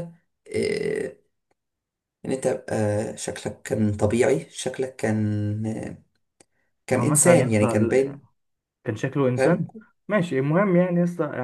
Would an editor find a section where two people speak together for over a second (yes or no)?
yes